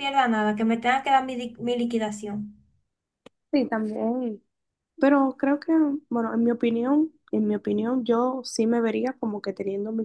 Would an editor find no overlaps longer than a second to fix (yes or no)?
yes